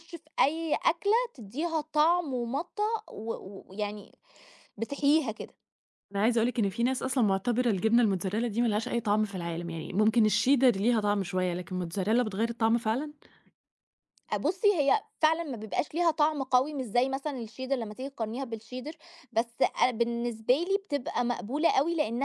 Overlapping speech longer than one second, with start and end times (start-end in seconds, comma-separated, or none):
none